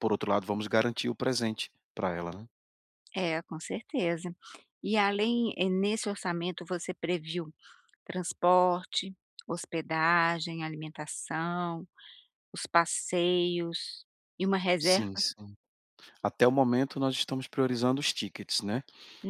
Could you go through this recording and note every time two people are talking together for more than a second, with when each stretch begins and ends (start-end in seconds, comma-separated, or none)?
none